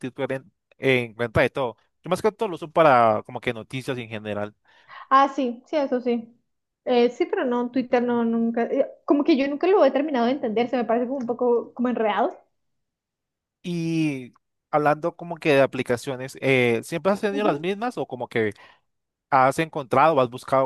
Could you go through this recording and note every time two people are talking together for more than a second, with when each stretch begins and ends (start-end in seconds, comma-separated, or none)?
none